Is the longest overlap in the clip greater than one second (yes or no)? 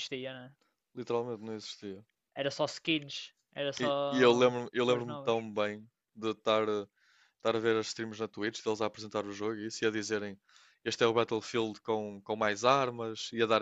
yes